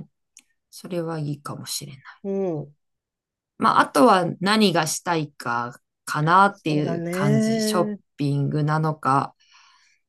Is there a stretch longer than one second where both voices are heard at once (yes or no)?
yes